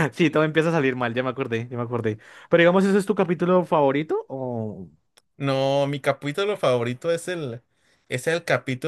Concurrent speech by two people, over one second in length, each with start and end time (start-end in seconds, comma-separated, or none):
none